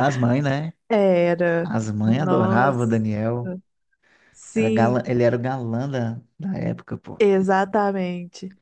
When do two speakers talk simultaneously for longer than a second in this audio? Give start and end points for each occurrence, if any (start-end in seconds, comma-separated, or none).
1.6-3.0